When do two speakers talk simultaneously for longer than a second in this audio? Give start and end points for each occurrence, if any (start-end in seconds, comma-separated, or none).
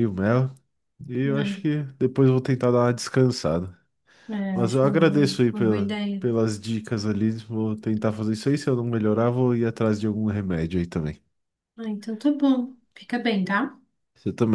4.5-6.2